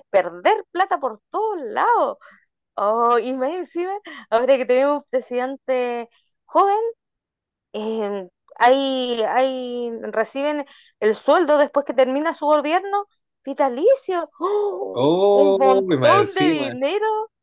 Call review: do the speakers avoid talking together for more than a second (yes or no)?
no